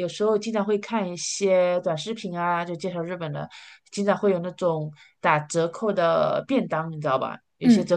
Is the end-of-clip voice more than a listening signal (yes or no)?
no